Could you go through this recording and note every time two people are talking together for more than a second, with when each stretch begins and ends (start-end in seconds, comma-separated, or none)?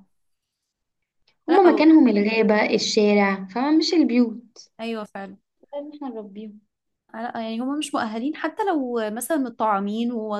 none